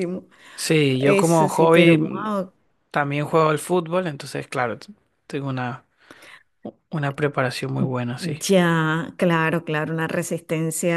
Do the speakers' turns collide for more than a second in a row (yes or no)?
yes